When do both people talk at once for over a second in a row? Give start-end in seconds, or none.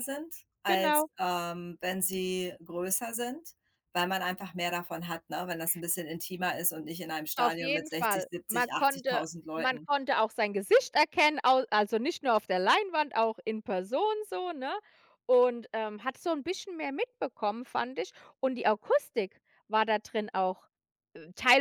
7.4-9.9